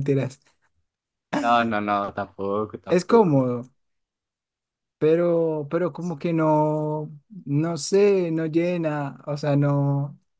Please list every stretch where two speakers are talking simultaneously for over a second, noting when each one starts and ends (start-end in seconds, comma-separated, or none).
none